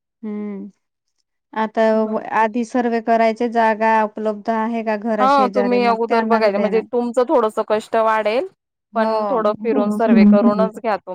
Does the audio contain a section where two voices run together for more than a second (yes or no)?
yes